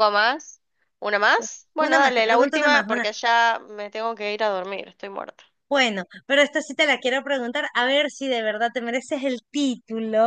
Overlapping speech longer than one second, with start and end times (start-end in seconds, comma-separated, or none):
1.8-3.1